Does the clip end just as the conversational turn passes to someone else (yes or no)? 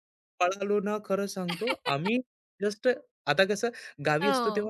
no